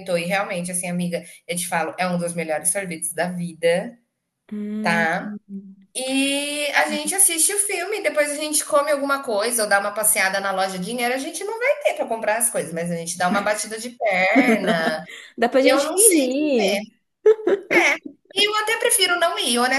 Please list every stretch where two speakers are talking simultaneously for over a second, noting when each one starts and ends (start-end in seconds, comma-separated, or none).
none